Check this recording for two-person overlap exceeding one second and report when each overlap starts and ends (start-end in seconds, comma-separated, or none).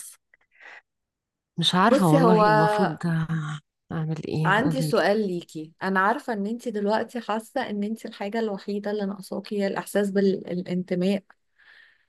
none